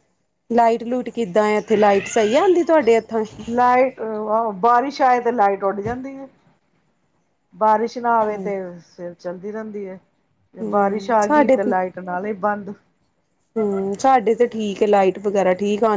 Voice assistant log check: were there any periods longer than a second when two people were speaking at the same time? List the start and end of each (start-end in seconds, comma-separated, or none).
none